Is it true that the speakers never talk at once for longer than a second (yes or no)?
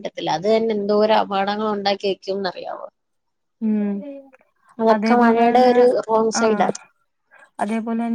yes